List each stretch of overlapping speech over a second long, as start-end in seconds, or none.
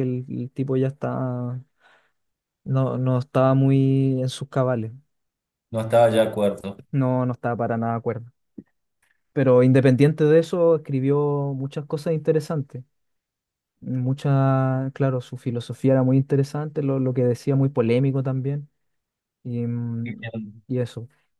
none